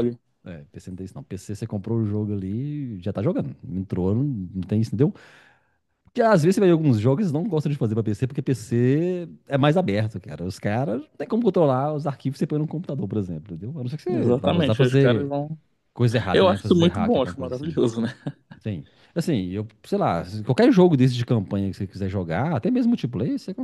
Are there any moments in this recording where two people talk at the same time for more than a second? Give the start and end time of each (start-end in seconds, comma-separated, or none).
14.1-15.3, 16.3-17.8